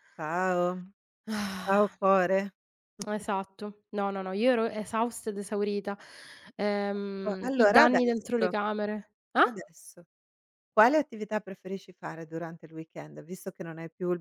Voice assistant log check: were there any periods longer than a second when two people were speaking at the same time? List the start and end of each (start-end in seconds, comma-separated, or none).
7.3-8.5